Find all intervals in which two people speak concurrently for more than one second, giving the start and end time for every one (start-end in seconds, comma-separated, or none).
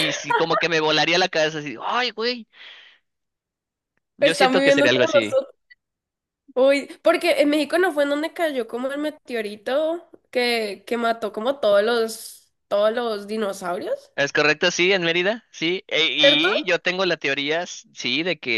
4.2-5.4